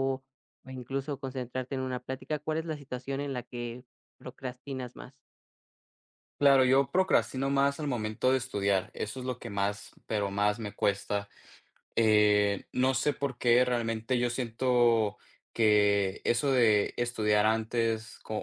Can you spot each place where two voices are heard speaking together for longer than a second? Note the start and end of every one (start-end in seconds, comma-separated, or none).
none